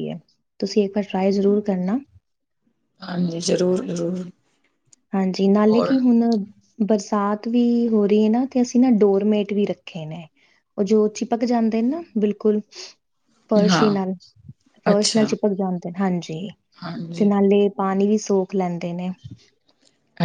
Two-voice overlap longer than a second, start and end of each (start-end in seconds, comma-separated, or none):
none